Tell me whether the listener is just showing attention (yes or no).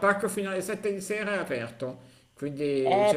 no